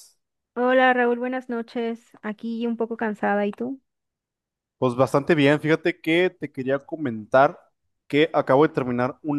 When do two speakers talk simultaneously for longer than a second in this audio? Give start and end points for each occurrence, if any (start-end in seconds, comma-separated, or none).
none